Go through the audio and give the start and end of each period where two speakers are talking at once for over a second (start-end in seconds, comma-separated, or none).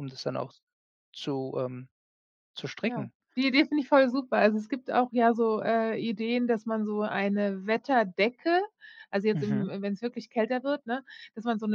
none